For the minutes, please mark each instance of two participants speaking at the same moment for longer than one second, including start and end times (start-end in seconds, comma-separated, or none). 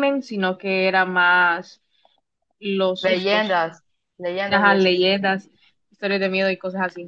none